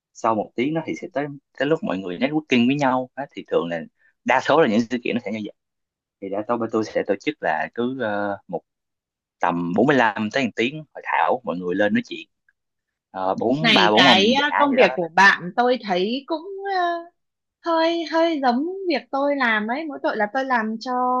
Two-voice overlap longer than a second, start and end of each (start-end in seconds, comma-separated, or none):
13.6-15.3